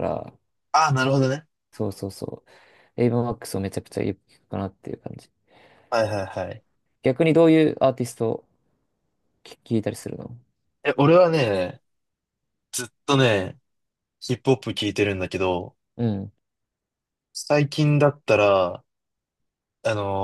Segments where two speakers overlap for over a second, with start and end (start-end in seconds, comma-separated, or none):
none